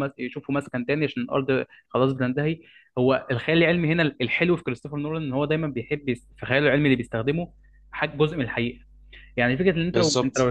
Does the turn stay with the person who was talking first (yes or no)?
yes